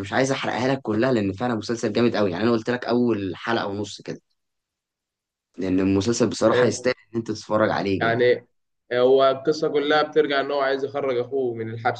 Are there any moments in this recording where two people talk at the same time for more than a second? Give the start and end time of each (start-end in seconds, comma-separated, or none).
none